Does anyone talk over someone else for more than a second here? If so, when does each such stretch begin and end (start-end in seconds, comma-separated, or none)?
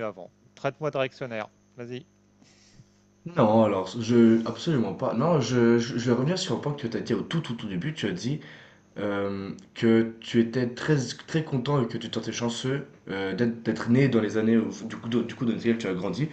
none